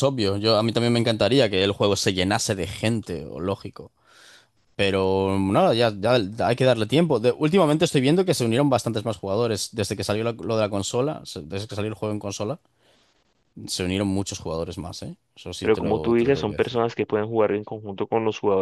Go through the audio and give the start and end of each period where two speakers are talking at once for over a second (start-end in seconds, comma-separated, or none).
15.6-16.8